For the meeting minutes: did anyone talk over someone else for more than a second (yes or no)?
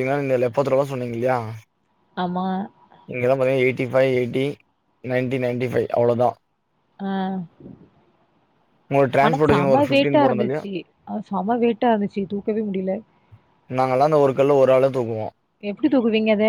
yes